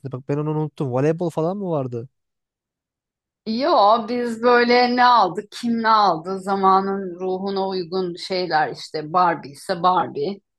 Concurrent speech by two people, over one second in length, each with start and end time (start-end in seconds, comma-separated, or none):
none